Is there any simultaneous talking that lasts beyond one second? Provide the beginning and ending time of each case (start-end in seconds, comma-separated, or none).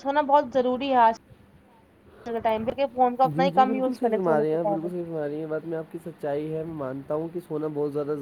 none